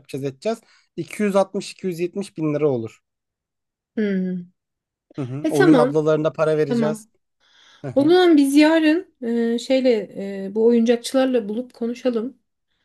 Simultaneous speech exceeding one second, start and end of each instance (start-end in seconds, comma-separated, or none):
none